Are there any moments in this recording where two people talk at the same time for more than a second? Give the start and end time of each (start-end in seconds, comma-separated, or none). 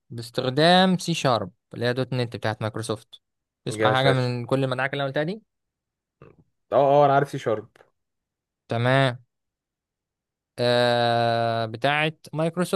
none